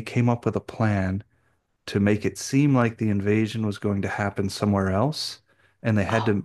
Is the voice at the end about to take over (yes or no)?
no